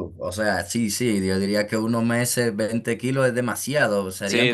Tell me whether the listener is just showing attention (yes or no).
yes